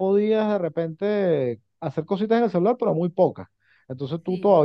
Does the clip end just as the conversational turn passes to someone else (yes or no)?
no